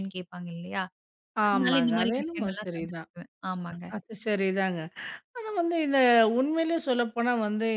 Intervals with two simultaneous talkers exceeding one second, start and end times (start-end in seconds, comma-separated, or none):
1.5-3.1